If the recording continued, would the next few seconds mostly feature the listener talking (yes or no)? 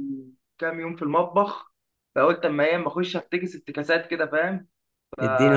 yes